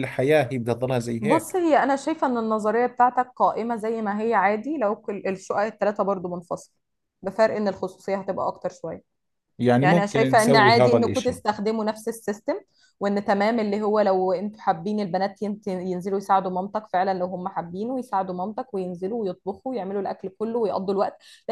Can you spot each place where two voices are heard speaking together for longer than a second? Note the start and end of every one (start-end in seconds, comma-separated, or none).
9.8-11.4